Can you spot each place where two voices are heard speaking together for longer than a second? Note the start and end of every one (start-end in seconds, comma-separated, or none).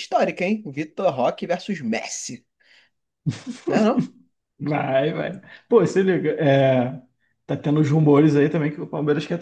none